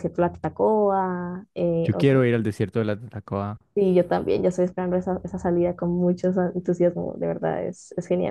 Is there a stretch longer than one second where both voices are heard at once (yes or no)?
no